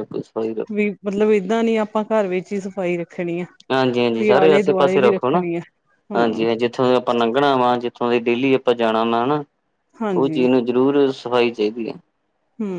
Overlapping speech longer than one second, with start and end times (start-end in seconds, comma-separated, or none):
4.2-5.4